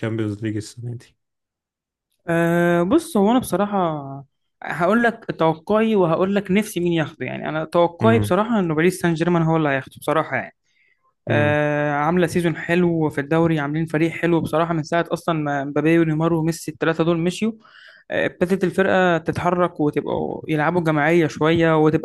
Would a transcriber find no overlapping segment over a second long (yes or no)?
yes